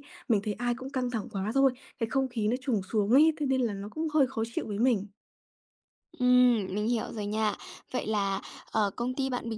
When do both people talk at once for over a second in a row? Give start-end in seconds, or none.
none